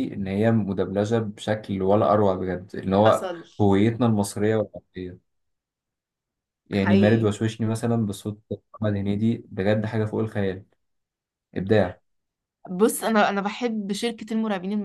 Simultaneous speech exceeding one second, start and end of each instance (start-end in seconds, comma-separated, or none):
none